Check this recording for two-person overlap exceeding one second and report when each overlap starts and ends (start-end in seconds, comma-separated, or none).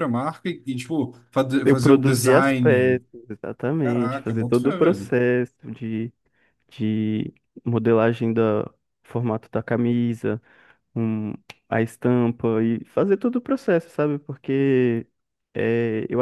1.6-3.0, 3.8-5.1